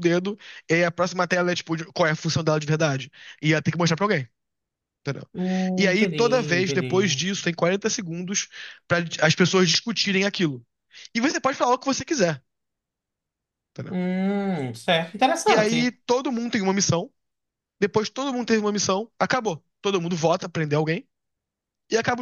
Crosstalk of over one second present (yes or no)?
yes